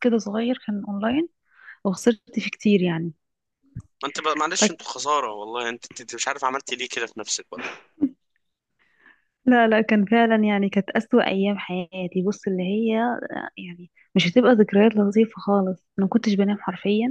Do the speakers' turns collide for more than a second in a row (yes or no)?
no